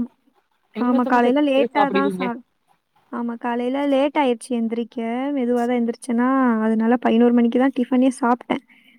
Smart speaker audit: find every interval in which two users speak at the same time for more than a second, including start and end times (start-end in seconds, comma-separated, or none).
0.9-2.3